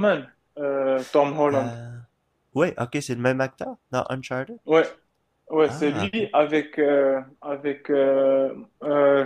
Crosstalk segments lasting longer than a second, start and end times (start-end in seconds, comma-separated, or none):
none